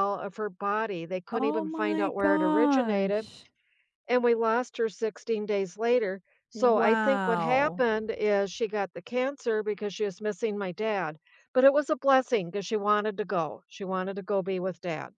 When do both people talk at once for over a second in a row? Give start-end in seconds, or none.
1.3-3.3, 6.5-7.8